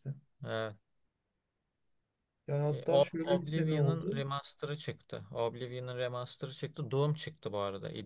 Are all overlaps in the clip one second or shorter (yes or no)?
no